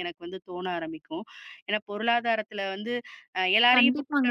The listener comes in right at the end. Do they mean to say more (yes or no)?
yes